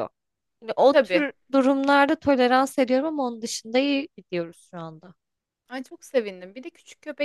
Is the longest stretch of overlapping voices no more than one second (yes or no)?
yes